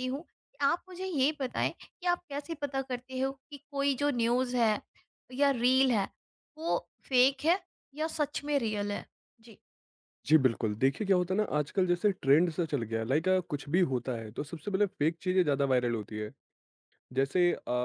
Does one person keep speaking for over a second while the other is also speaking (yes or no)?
no